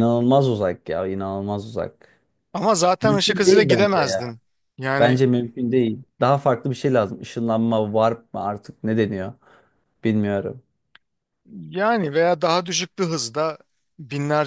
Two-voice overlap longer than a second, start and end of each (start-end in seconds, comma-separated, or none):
3.0-4.2